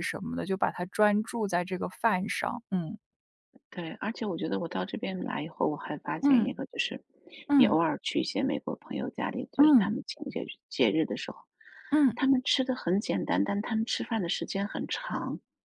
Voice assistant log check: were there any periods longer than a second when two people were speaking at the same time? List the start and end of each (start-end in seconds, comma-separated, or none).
none